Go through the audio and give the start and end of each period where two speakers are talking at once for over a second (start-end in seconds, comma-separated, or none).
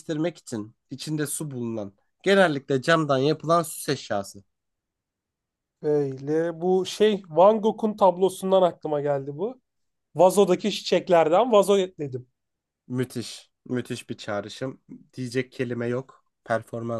none